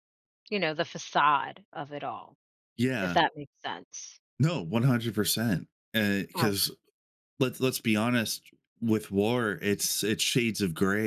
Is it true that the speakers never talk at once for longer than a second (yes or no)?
yes